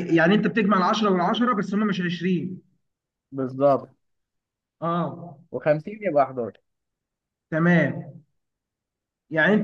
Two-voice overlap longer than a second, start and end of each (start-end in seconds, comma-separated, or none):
none